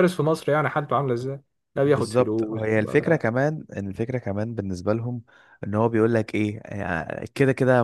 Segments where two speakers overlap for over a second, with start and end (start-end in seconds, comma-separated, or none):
1.8-3.2